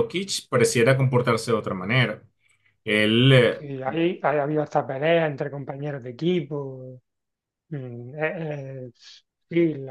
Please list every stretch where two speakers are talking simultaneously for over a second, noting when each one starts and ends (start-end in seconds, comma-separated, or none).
none